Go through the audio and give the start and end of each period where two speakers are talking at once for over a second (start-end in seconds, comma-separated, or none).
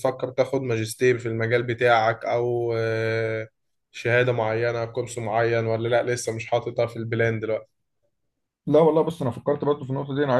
none